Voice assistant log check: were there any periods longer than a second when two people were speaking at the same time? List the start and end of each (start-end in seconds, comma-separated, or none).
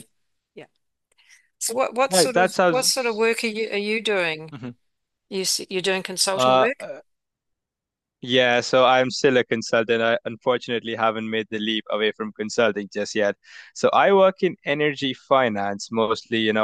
2.1-3.3